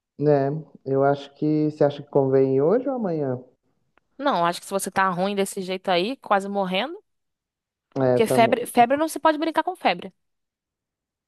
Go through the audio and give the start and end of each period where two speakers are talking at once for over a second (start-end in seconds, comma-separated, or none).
none